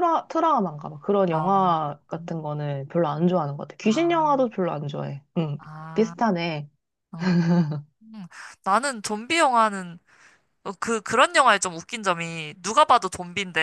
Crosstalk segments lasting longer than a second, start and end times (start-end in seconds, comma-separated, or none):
none